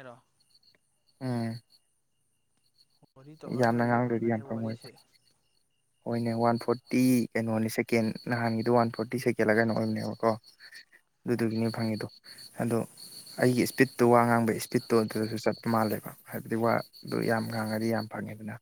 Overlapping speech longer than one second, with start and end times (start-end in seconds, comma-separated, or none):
3.6-4.9